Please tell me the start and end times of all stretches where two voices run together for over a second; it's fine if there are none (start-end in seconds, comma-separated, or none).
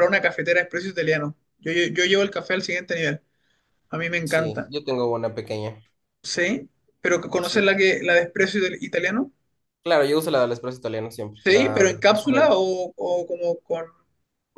11.4-12.6